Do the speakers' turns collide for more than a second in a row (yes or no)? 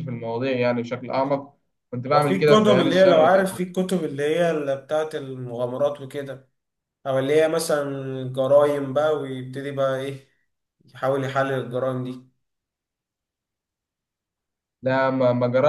yes